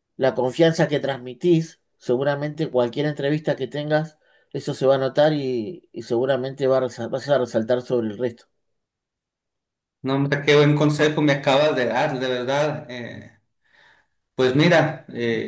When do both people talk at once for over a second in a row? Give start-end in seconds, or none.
none